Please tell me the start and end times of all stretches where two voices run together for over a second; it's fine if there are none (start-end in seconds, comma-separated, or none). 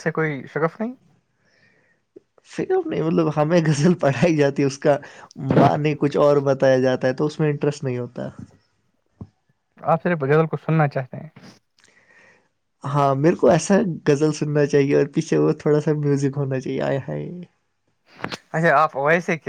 none